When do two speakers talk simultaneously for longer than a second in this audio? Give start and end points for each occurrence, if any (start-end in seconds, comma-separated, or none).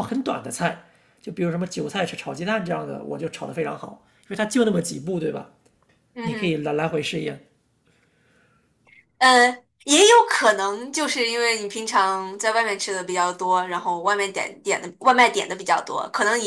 none